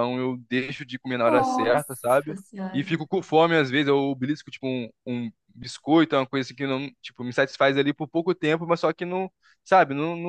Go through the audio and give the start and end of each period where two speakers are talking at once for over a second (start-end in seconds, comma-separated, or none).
1.2-3.0